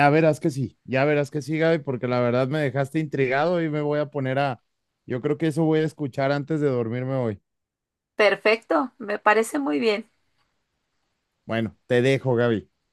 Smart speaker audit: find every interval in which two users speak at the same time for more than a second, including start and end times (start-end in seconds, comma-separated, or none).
none